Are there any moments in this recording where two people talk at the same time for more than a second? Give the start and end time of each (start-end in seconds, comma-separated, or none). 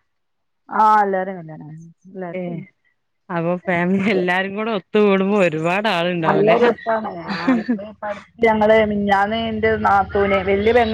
none